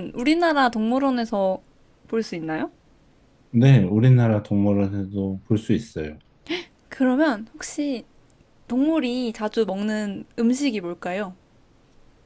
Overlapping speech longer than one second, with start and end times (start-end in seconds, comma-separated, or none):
none